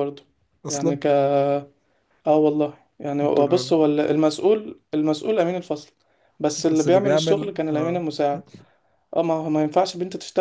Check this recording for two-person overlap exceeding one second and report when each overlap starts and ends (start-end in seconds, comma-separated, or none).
6.6-8.0